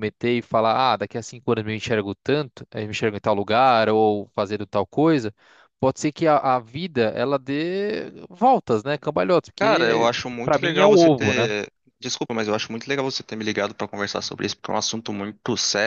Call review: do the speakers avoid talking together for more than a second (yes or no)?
no